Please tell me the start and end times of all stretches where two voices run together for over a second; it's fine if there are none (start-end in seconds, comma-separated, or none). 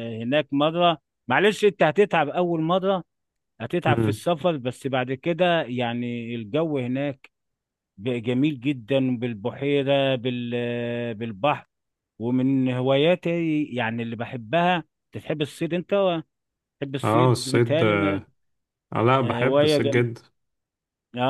17.0-18.2